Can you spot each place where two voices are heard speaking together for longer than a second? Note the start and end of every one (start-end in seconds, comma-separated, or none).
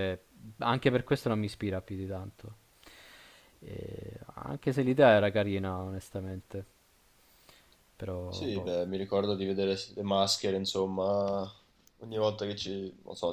none